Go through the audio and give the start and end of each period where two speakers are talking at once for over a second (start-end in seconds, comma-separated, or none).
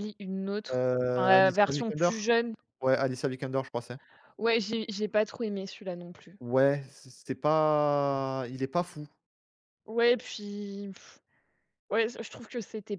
0.7-2.1